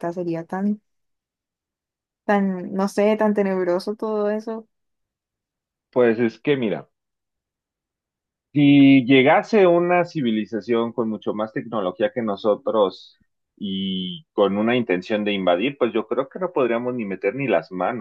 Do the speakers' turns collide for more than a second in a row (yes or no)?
no